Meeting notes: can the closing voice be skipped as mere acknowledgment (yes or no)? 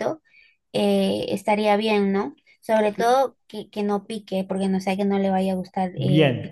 no